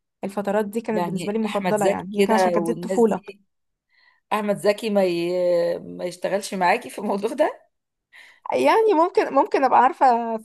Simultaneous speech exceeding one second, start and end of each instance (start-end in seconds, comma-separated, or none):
0.9-3.2